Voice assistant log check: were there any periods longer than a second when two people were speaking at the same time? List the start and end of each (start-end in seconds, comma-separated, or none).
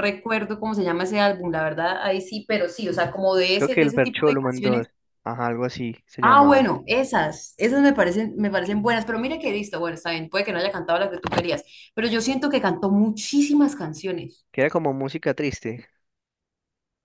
3.5-4.8